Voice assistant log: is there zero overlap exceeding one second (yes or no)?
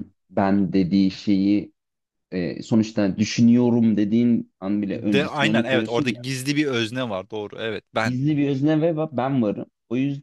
no